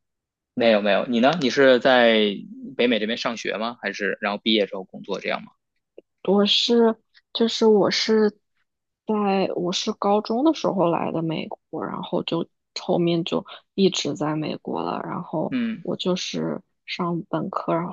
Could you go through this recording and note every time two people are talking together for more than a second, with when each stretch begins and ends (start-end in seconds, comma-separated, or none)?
none